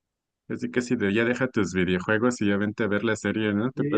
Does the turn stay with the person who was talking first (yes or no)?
no